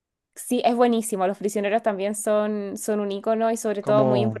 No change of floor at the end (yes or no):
yes